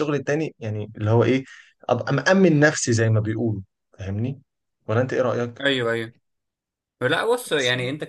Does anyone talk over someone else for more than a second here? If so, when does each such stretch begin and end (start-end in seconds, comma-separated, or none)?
none